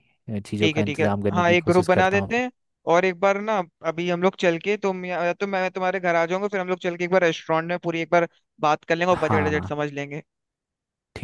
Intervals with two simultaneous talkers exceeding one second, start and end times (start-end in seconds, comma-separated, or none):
0.6-2.5